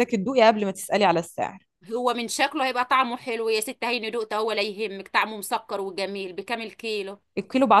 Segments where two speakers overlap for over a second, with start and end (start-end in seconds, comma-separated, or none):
none